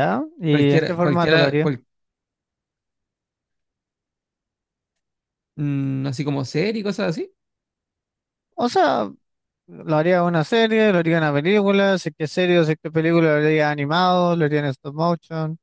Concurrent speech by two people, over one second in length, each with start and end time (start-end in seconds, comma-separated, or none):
0.5-1.7